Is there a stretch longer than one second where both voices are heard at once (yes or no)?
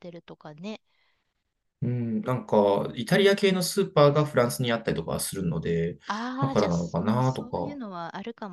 yes